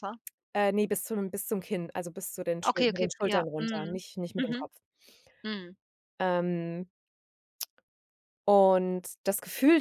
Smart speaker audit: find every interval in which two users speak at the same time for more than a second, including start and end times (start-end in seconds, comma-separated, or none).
2.7-4.7